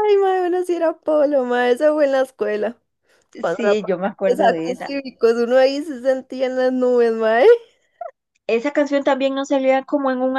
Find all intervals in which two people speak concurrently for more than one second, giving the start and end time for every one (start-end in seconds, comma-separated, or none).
3.4-4.9